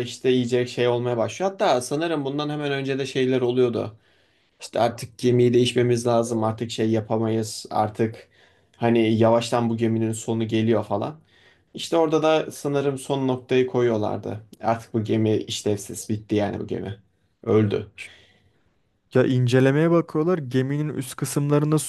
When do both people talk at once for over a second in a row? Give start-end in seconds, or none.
none